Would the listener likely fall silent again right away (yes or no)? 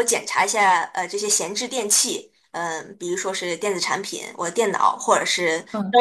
yes